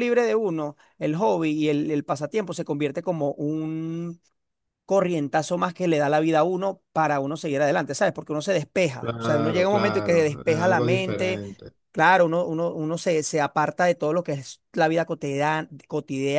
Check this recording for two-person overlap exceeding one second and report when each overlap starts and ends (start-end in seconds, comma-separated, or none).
9.0-11.4